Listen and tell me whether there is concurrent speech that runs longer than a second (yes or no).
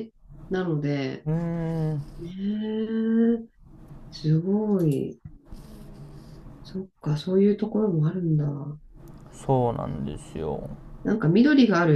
no